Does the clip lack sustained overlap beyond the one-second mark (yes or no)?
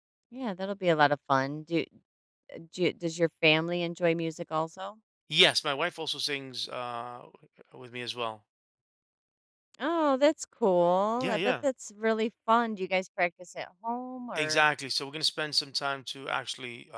yes